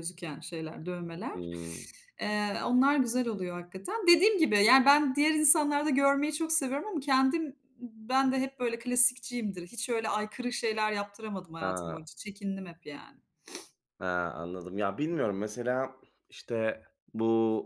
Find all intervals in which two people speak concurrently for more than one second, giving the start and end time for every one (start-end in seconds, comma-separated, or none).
none